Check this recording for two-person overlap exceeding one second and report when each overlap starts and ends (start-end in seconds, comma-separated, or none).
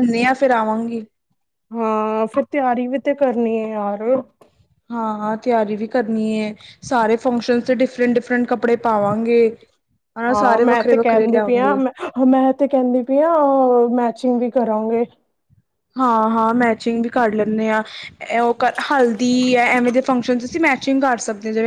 10.3-11.8